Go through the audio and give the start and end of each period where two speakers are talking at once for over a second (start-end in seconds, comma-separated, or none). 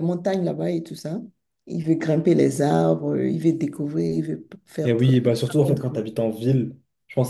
4.8-6.0